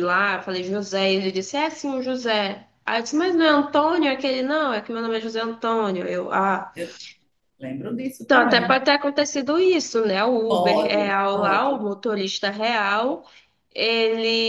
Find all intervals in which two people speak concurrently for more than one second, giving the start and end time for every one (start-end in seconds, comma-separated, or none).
10.5-11.8